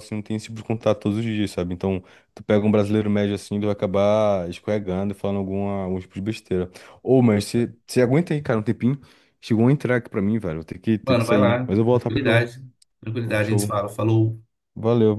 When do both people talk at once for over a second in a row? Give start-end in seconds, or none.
11.1-12.5